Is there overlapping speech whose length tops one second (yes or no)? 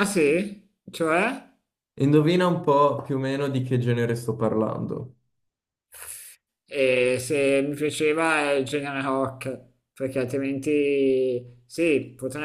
no